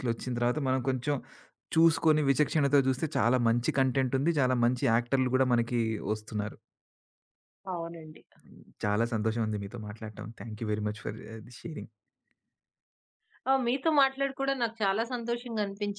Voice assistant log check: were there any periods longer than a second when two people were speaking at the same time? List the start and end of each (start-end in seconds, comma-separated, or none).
none